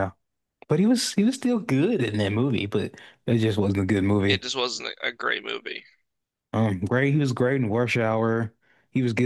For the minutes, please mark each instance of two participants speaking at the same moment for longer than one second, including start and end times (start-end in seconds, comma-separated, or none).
none